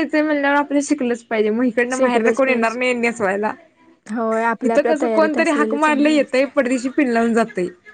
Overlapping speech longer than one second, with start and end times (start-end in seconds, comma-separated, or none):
4.7-6.3